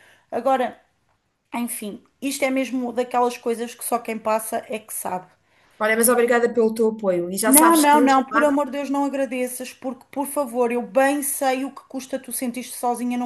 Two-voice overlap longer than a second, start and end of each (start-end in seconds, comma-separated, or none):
none